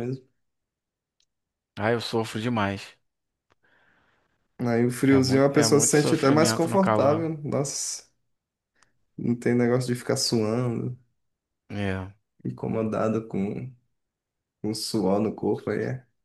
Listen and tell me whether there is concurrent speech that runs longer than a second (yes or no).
yes